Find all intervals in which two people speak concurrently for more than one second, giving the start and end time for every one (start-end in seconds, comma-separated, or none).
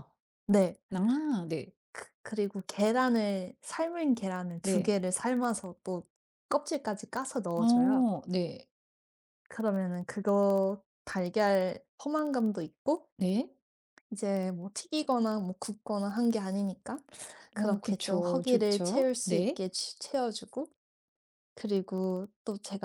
17.6-19.6